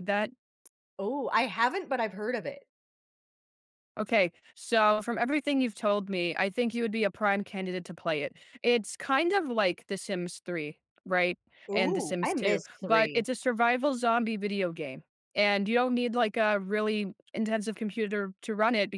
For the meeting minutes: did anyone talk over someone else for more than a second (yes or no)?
yes